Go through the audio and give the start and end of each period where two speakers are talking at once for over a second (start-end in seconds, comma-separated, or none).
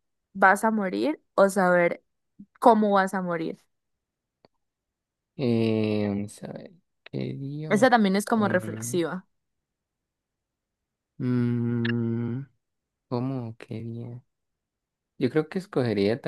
7.7-9.0